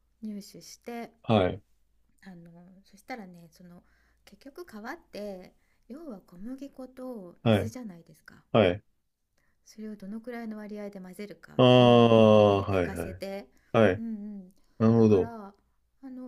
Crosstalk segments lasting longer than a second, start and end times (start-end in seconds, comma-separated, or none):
11.6-13.2